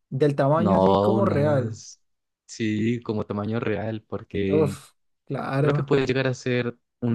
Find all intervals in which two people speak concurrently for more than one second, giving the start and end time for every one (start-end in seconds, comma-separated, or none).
0.6-1.8